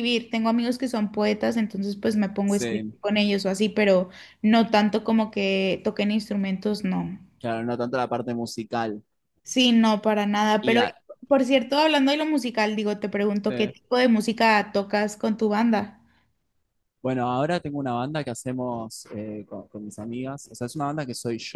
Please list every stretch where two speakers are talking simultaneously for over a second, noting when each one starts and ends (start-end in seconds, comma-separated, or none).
none